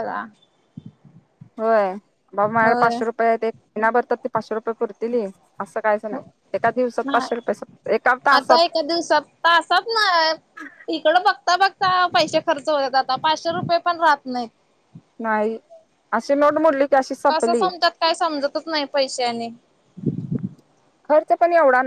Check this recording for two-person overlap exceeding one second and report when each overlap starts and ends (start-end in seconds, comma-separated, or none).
none